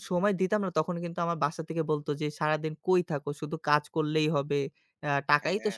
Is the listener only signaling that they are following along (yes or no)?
yes